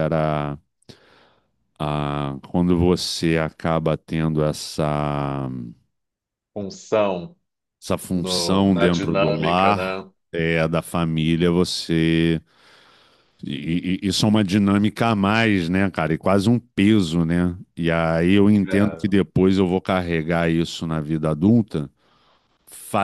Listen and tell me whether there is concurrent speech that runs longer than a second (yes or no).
yes